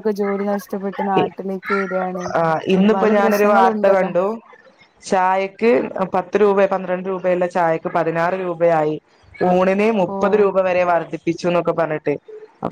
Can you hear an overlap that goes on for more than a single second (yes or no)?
yes